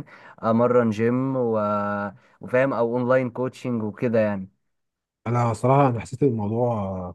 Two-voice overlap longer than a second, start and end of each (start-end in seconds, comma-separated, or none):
none